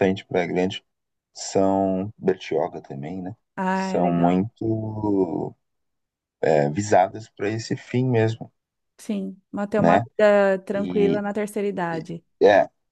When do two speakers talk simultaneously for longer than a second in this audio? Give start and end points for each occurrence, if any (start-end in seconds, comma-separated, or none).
none